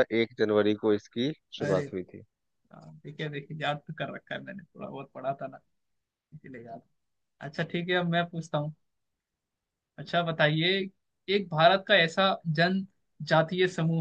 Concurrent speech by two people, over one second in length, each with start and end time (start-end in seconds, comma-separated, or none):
none